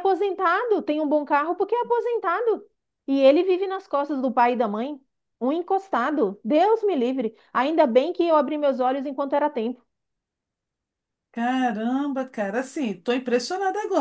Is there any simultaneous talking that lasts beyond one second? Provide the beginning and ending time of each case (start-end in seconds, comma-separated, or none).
none